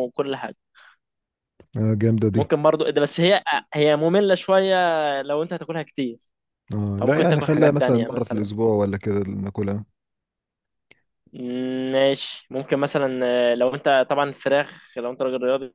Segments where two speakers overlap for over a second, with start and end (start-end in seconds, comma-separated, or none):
7.0-8.5